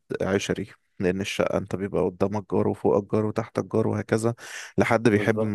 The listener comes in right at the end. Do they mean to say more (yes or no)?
no